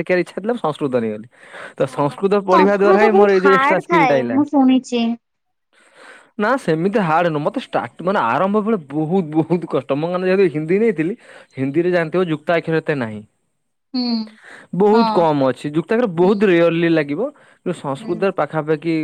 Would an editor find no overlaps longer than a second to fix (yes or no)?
no